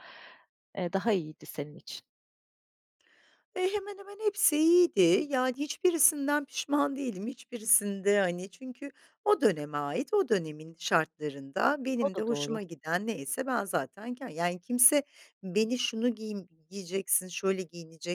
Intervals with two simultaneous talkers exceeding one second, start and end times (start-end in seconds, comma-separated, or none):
none